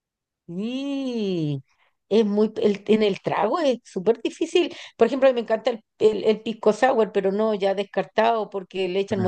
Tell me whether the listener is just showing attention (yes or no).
yes